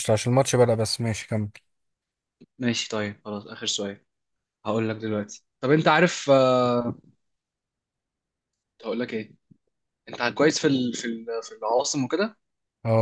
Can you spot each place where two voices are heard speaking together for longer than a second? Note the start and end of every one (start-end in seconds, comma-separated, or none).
none